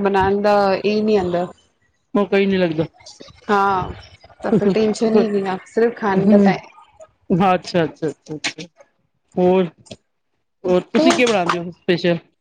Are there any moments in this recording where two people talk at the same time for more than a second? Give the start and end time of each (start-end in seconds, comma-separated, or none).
none